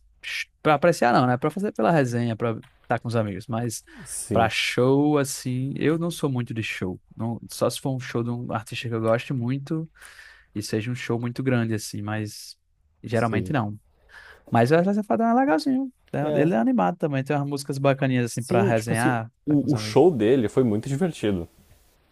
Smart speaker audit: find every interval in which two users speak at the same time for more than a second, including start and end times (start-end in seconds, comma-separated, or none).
18.3-20.0